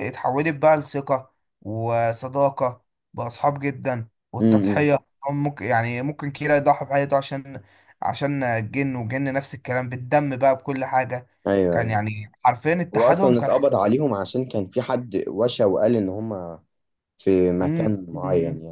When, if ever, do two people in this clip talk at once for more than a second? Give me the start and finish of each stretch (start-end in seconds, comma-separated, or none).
none